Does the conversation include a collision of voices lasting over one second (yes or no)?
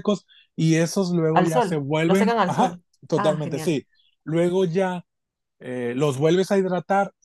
yes